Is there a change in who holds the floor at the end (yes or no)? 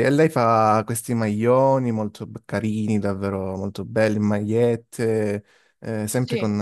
no